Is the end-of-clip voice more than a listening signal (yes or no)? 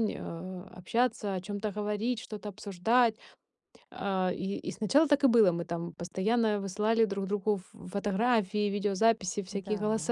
no